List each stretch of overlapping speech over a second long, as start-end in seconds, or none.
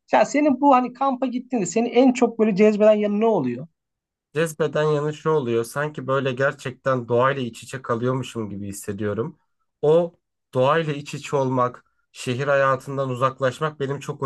none